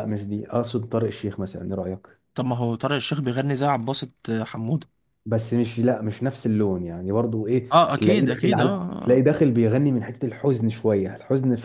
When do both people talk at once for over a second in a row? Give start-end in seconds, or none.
7.7-9.2